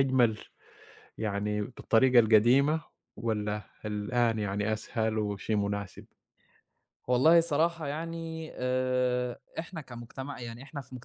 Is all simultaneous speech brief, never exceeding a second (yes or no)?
yes